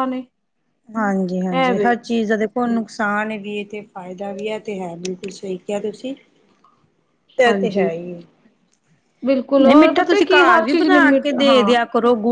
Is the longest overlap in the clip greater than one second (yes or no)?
yes